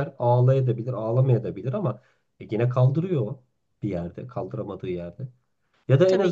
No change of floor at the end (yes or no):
yes